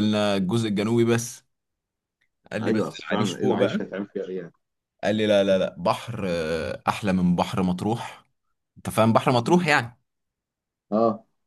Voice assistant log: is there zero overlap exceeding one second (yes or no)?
no